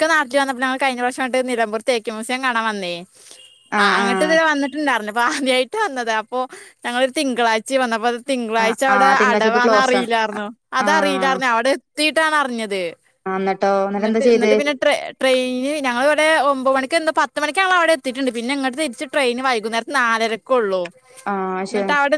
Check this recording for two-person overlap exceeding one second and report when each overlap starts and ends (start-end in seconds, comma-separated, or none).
8.7-10.1